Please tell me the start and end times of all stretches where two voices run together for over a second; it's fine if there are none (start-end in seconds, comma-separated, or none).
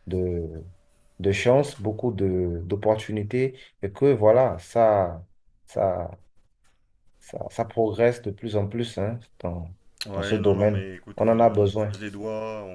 10.1-11.9